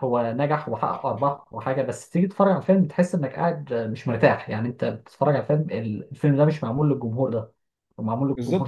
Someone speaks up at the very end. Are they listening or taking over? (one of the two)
taking over